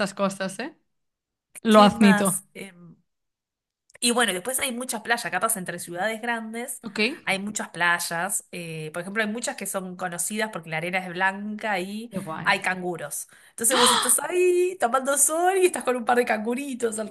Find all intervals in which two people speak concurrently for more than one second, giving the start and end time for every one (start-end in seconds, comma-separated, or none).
none